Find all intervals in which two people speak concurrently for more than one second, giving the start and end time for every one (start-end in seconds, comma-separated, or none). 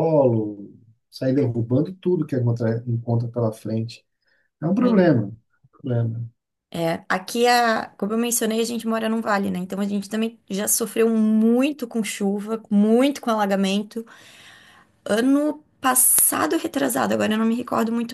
none